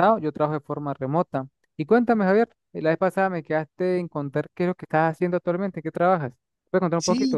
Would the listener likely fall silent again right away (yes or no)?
no